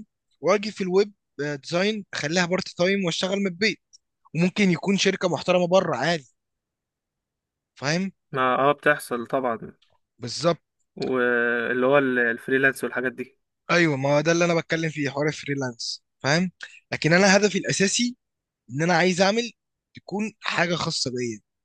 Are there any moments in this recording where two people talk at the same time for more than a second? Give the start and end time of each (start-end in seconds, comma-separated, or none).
none